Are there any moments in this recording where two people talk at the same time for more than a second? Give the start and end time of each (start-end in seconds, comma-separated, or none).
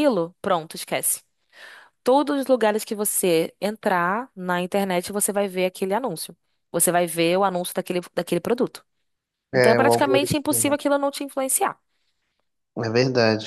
9.5-10.7